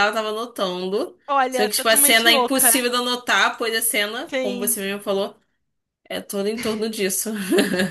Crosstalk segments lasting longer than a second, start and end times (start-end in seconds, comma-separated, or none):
1.3-2.8